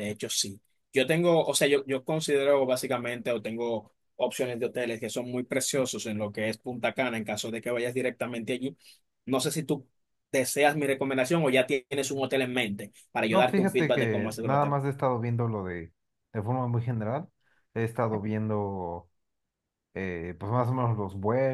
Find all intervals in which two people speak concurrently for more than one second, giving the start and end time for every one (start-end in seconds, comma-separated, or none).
13.3-14.8